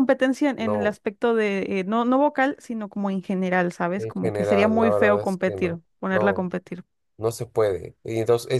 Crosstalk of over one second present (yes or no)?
yes